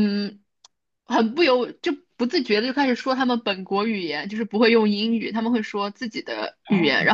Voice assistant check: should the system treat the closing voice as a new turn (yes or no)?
no